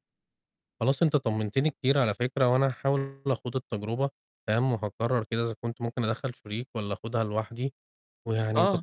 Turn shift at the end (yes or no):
no